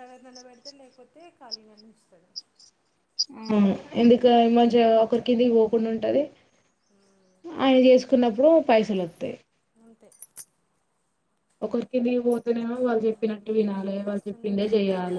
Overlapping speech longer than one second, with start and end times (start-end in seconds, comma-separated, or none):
12.8-14.6